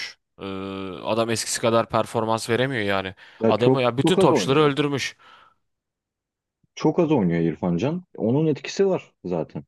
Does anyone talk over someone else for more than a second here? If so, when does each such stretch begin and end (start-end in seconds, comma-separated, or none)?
3.4-4.7